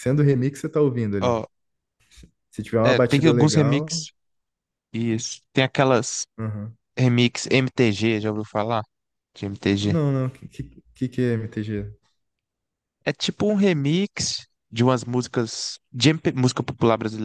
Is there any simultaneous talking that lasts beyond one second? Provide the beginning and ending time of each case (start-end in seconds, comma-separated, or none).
2.8-4.0